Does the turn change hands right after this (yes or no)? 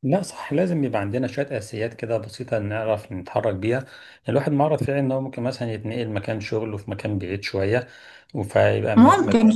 no